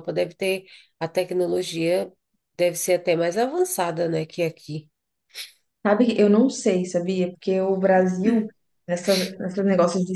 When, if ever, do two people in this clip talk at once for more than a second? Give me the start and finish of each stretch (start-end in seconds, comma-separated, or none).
none